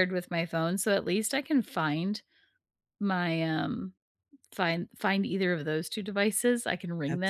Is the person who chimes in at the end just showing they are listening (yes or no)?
yes